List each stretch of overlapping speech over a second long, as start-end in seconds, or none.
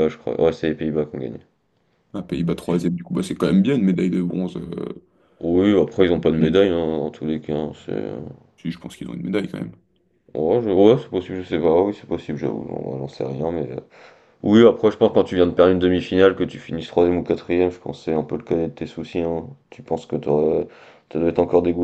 none